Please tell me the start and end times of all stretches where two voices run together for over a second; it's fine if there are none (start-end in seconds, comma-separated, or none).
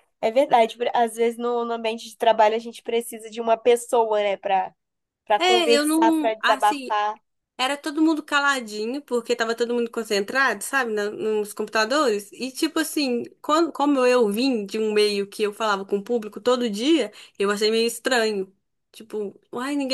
5.4-7.0